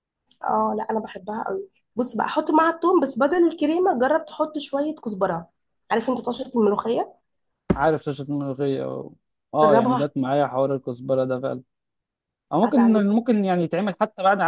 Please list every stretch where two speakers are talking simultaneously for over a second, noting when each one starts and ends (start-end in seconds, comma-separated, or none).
none